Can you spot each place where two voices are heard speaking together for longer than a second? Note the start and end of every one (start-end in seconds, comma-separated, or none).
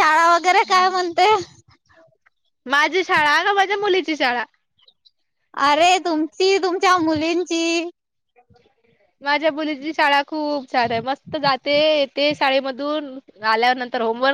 none